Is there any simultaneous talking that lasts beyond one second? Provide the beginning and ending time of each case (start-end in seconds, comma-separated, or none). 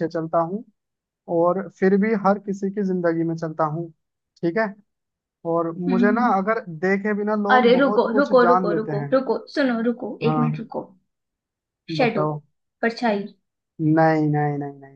7.5-9.1